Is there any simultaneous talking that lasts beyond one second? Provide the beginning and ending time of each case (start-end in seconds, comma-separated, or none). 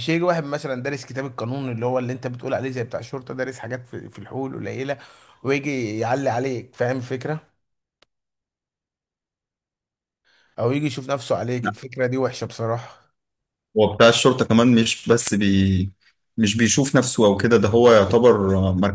none